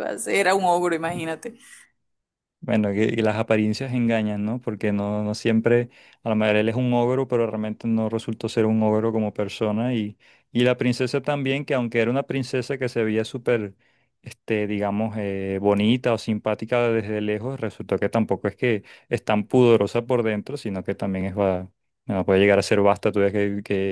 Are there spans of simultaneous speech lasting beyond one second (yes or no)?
no